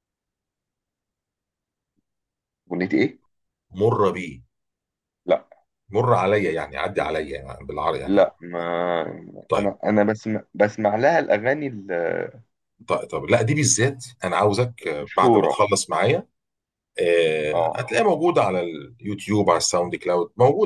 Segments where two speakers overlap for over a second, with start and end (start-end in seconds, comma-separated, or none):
none